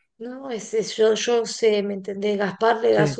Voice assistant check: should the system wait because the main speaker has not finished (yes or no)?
yes